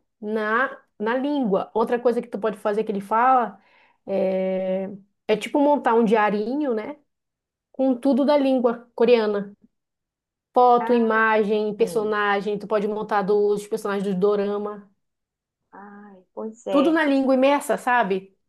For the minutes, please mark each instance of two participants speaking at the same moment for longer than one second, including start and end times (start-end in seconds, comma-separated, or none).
none